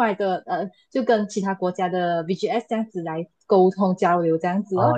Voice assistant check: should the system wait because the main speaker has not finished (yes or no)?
no